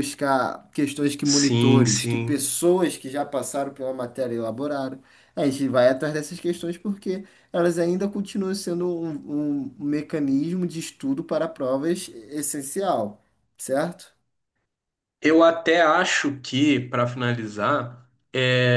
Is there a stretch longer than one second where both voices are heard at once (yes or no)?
yes